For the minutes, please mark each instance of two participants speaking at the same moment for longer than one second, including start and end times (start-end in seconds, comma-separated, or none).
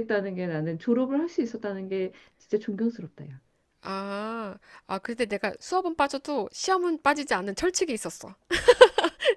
none